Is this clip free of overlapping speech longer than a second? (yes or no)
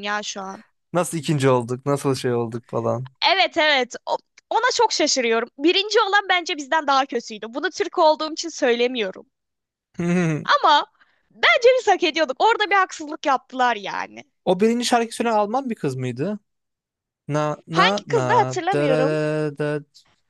no